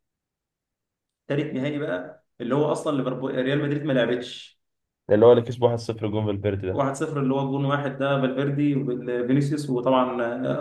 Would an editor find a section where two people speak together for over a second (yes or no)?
no